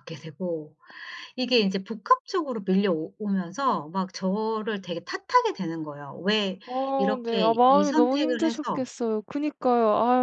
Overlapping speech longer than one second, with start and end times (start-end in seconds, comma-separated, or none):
7.0-8.8